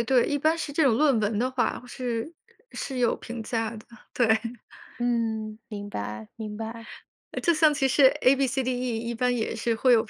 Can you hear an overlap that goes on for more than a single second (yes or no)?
no